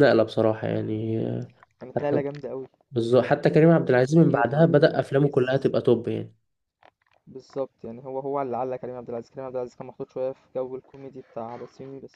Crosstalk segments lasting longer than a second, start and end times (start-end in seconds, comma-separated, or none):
3.8-5.4